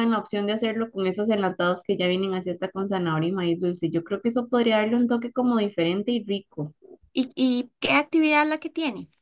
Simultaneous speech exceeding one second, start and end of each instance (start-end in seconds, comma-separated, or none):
none